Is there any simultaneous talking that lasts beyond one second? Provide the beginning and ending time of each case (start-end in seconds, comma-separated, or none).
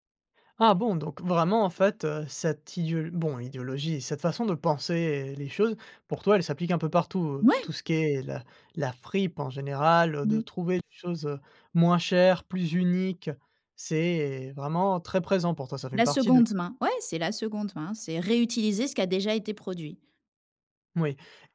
none